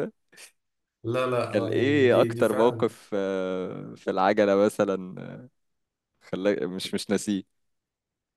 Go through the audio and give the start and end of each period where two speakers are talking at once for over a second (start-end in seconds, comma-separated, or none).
1.5-2.9